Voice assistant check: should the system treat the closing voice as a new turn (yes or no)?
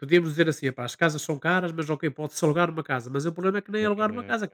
no